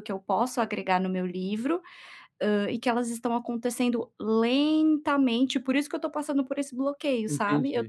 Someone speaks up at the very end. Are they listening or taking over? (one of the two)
listening